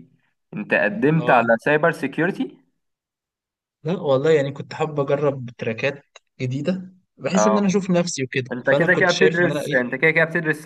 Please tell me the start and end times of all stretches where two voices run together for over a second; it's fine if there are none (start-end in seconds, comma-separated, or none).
8.5-9.8